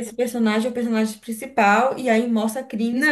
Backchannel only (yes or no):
no